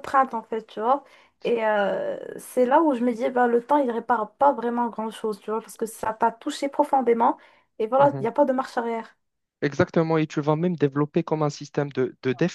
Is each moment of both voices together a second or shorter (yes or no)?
yes